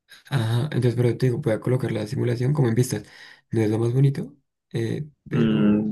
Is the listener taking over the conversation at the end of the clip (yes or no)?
yes